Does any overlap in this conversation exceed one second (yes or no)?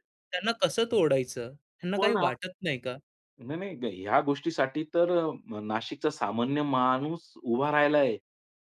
no